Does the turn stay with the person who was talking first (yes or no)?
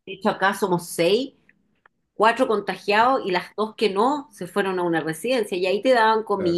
yes